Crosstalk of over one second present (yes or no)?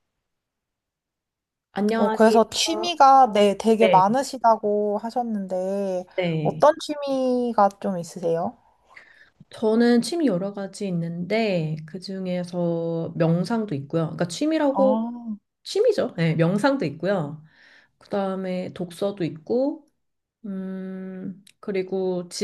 no